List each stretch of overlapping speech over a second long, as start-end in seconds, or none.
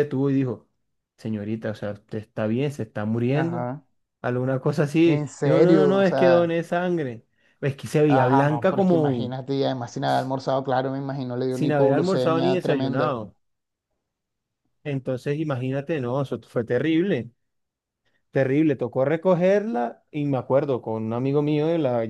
5.0-6.5, 8.1-9.3, 11.5-13.2